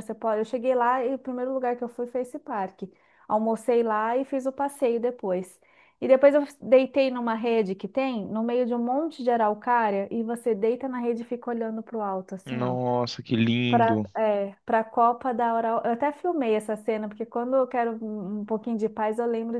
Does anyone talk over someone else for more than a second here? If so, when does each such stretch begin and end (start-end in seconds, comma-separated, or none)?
none